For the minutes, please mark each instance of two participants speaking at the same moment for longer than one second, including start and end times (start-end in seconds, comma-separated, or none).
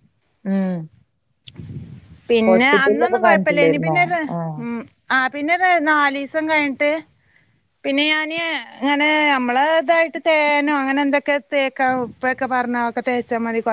2.5-4.0